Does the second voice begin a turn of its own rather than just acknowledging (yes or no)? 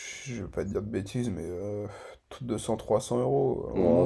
yes